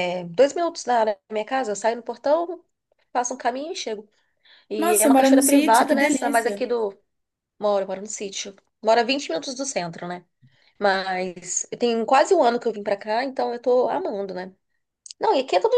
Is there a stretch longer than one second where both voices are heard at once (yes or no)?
yes